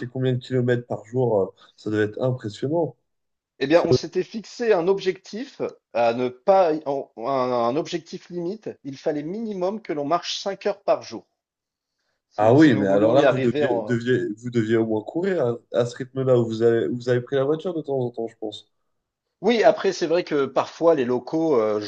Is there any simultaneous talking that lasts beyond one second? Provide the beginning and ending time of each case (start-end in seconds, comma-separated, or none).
12.4-13.6